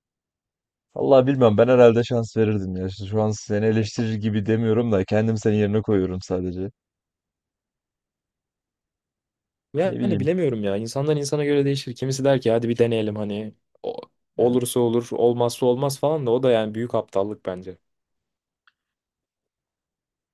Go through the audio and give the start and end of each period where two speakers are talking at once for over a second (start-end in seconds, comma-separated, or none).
none